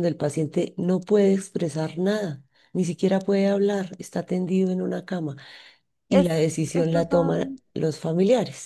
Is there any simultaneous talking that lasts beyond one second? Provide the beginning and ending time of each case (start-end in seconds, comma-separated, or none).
6.1-7.6